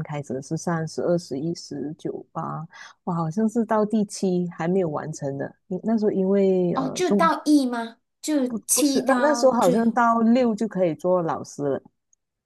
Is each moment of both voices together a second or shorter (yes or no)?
no